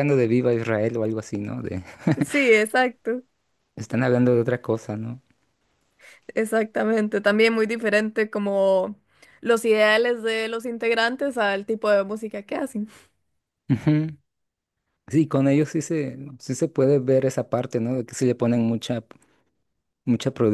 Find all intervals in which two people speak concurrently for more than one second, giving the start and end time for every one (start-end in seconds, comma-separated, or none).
none